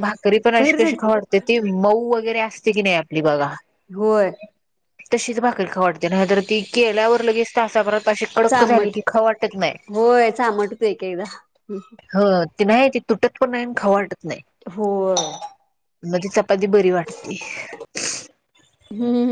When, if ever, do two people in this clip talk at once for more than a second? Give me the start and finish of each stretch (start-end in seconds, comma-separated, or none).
none